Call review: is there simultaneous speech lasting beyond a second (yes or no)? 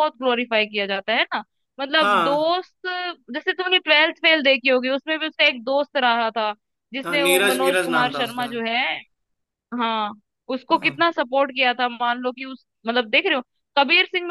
yes